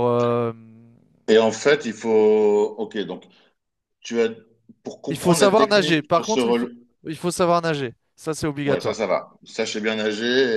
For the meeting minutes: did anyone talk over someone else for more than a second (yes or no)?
yes